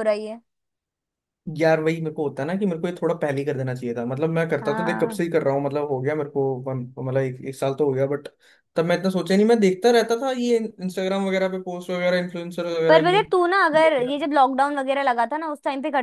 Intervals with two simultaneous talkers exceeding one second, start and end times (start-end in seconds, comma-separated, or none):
none